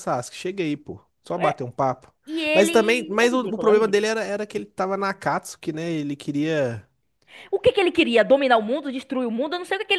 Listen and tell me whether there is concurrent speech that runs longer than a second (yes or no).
yes